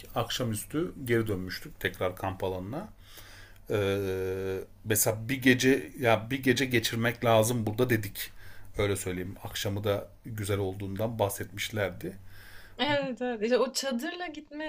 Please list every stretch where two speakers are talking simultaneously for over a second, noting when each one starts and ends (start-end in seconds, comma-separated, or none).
none